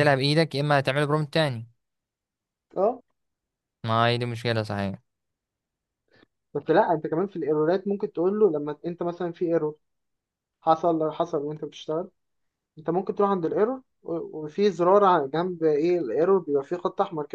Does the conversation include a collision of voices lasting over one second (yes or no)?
no